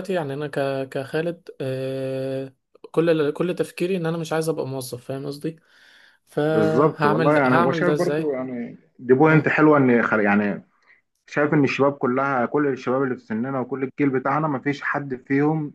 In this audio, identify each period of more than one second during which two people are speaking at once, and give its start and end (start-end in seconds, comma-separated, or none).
6.5-8.3